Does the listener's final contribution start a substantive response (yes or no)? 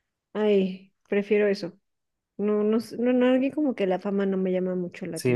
yes